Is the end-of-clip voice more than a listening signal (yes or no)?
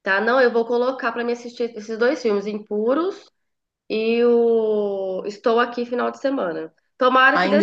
yes